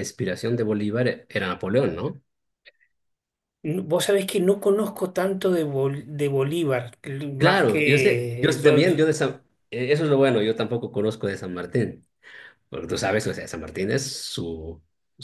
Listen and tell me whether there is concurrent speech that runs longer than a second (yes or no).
yes